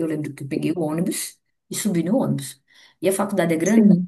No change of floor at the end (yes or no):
yes